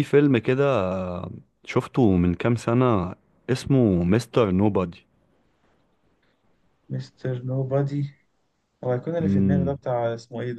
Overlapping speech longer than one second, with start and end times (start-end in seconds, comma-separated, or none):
none